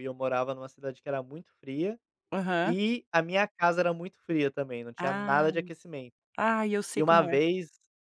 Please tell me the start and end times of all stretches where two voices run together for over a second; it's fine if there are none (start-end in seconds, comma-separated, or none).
none